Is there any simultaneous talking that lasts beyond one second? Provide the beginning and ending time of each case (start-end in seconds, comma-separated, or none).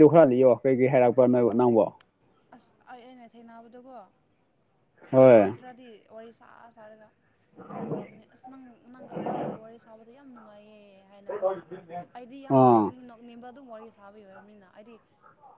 none